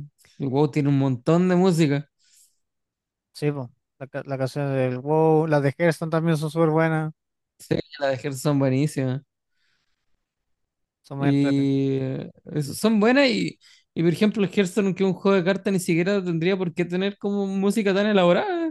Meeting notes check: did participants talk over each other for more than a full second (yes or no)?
no